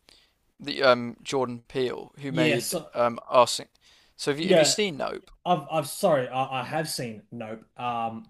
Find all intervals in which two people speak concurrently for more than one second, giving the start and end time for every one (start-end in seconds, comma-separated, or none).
none